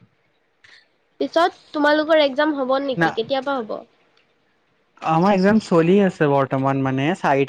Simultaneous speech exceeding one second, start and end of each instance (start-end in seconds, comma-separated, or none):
none